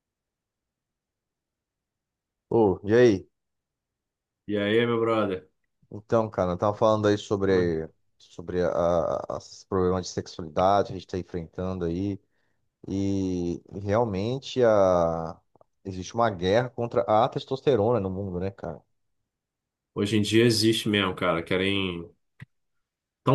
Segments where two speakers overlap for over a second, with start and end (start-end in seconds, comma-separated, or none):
none